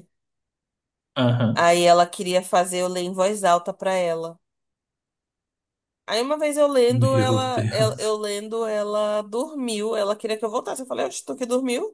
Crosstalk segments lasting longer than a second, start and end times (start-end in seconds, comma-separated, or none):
6.9-8.1